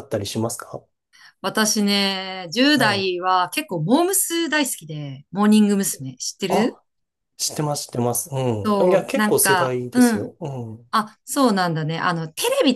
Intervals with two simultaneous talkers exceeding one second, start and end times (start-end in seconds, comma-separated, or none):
8.6-10.3